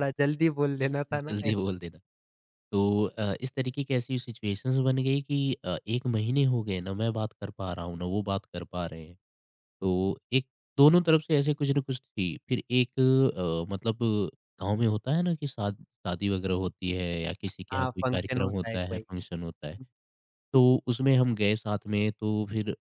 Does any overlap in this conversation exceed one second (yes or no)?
yes